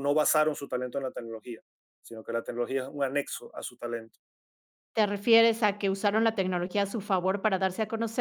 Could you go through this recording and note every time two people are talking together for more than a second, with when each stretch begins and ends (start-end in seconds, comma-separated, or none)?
none